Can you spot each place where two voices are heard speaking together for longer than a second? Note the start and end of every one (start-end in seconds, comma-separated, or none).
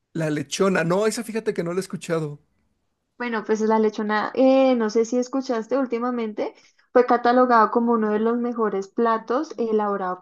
none